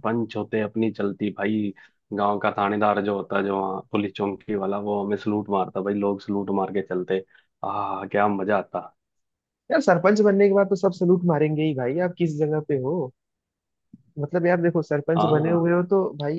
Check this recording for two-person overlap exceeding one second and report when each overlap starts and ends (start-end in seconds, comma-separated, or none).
none